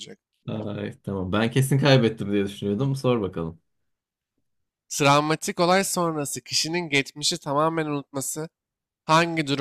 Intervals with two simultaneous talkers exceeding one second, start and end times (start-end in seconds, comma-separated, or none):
none